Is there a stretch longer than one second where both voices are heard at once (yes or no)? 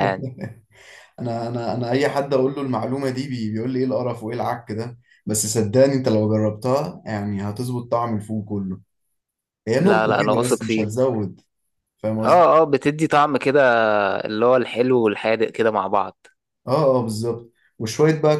yes